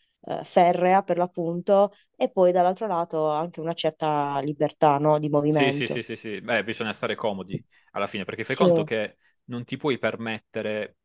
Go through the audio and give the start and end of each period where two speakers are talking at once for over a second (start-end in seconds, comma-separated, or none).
none